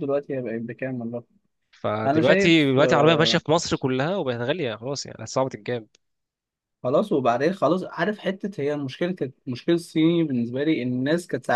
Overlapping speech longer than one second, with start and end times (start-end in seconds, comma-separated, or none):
2.1-3.4